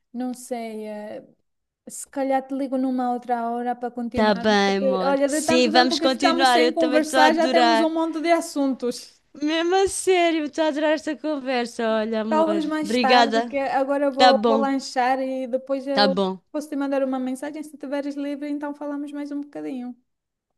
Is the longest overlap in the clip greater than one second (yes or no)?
yes